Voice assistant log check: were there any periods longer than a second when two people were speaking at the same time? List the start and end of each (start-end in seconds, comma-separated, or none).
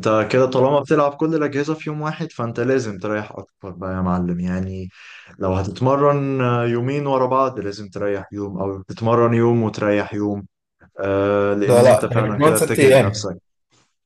11.6-13.3